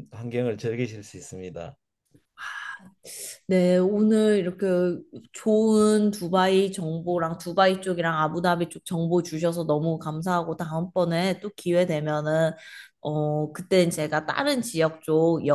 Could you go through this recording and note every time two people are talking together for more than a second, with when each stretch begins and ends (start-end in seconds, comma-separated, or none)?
none